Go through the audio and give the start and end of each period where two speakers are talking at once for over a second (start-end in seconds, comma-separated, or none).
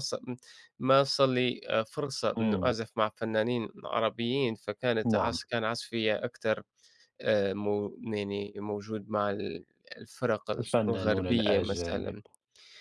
10.6-12.2